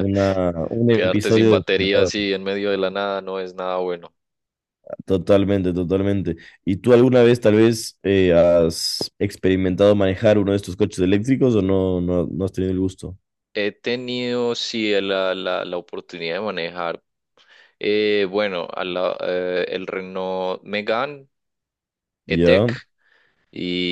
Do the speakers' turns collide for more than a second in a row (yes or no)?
yes